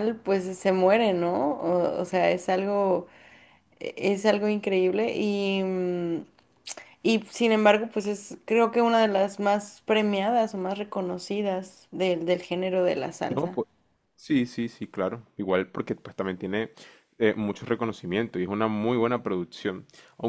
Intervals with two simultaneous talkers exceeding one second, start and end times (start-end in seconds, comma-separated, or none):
none